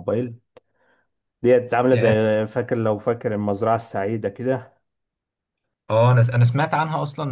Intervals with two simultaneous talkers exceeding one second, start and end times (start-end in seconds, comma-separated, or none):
none